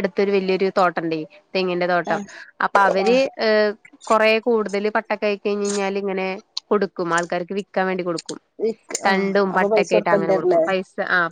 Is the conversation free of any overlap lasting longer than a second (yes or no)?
no